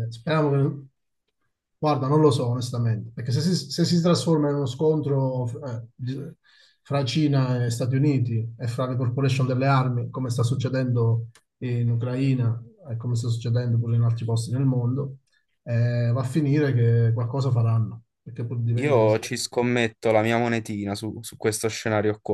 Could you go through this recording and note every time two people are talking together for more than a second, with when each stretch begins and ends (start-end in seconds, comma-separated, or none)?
none